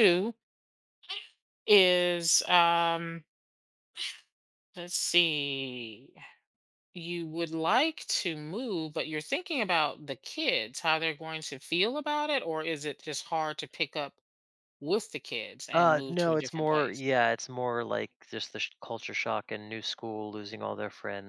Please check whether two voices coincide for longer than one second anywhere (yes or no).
yes